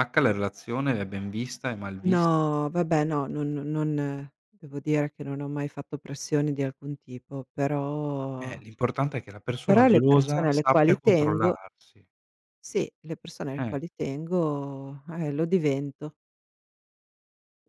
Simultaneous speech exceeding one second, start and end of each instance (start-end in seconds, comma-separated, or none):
9.6-11.6